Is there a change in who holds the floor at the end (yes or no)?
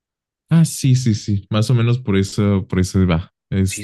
yes